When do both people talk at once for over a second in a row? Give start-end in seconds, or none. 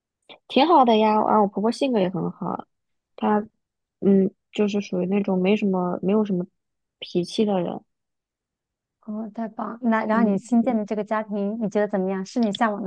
none